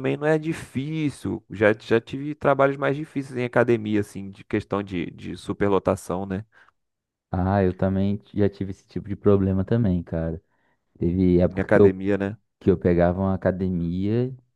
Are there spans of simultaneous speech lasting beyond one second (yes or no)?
no